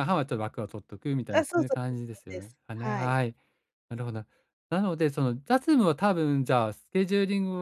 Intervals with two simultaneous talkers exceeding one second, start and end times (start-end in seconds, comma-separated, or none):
1.3-3.2